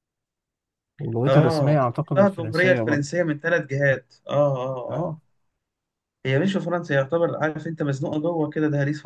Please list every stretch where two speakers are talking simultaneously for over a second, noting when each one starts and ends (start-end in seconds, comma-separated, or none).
1.3-3.0